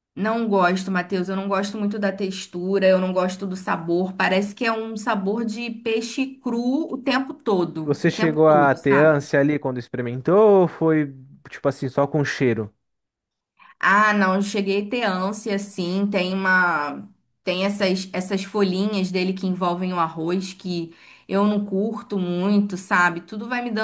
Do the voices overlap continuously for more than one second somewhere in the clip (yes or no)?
yes